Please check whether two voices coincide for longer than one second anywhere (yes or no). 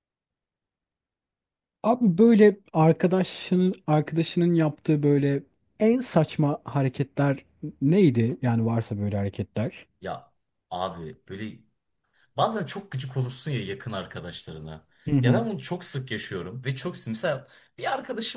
no